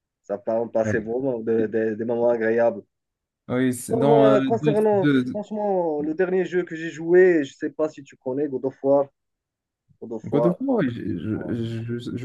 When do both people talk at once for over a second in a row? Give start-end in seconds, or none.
3.9-5.4